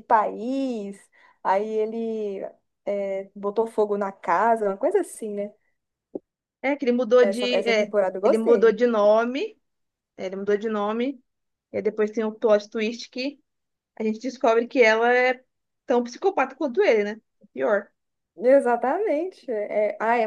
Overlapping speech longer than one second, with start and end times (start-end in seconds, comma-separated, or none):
7.2-8.8